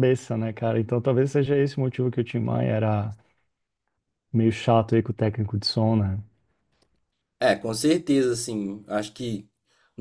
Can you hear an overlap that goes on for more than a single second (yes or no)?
no